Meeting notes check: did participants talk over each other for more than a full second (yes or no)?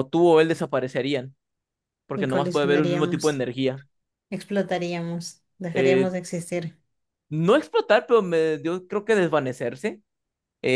yes